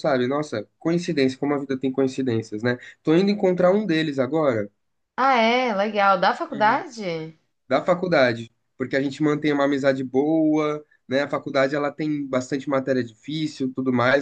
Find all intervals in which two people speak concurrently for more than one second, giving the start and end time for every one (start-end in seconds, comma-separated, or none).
none